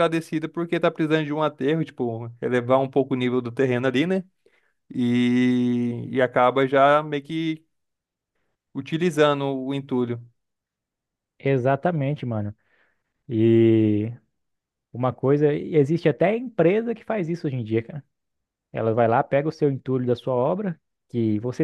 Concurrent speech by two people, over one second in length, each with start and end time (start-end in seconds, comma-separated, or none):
none